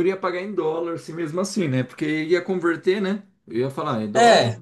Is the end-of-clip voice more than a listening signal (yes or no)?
yes